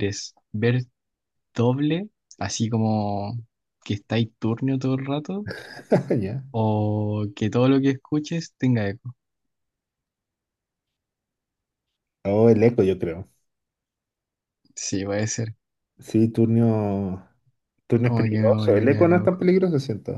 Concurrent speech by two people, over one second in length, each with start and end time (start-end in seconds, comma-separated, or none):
18.0-19.4